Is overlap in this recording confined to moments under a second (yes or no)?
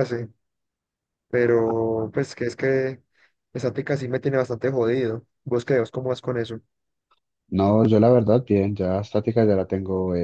yes